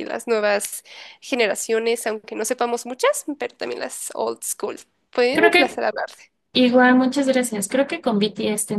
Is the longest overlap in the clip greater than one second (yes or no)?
no